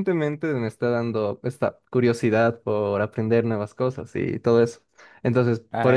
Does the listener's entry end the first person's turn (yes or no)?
no